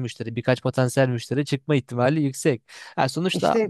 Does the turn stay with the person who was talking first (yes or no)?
yes